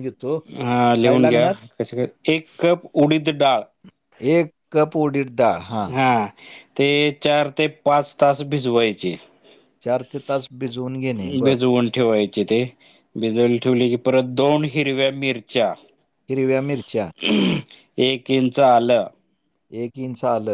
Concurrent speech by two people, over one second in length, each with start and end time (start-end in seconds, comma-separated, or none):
none